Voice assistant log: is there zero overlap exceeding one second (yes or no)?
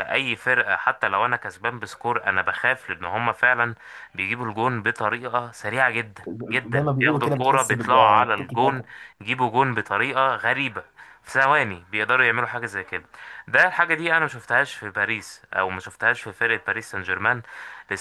no